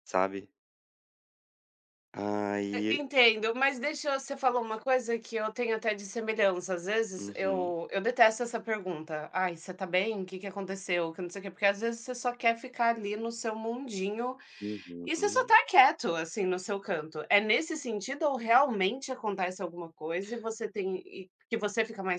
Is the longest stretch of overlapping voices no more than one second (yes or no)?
yes